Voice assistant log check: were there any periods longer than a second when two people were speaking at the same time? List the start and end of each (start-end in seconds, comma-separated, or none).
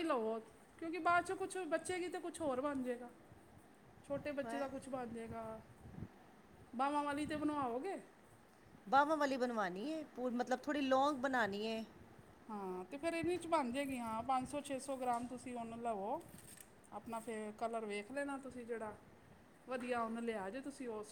none